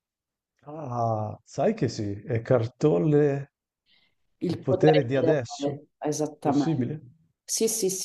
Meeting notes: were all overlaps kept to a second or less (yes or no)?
no